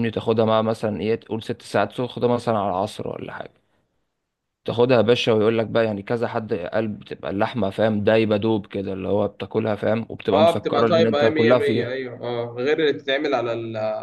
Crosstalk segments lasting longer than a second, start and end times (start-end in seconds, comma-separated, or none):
10.3-11.9